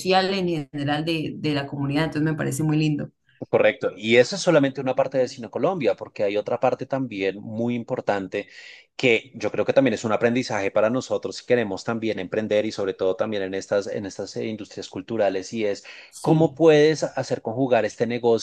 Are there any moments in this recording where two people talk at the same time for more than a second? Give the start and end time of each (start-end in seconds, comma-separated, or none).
none